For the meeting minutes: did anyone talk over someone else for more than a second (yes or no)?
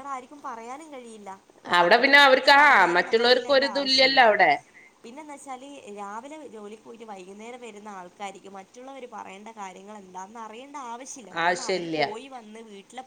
no